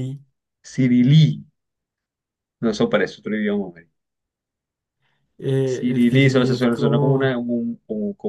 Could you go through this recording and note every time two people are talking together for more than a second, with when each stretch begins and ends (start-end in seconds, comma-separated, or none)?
5.7-7.3